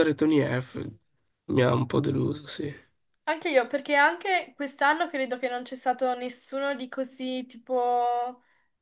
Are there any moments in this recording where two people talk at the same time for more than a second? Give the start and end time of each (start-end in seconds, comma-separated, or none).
none